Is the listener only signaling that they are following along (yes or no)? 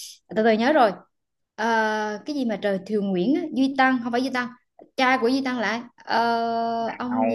yes